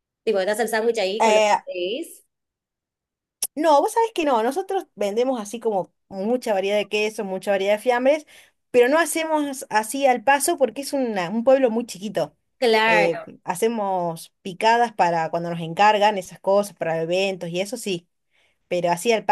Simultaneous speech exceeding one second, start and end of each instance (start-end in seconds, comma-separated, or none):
none